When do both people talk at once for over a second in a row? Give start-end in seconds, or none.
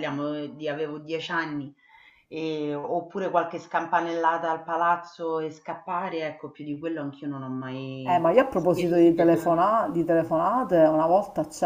8.0-9.7